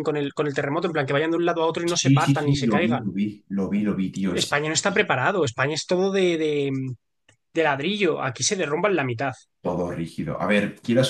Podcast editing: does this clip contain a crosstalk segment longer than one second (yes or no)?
yes